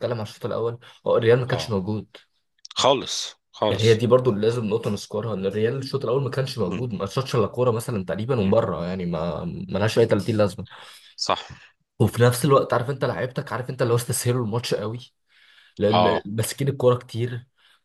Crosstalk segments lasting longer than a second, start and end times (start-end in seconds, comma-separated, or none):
none